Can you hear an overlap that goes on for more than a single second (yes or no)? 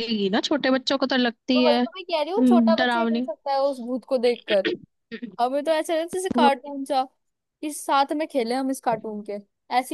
yes